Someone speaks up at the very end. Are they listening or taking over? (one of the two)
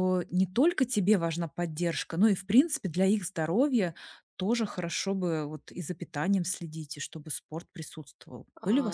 taking over